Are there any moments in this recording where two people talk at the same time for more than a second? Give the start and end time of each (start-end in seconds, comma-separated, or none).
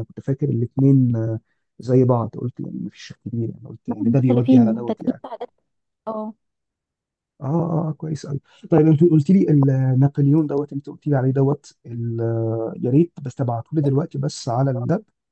3.9-5.2